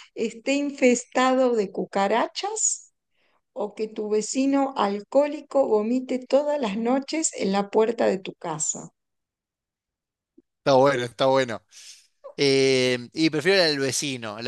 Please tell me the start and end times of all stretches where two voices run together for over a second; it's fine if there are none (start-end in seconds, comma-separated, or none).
none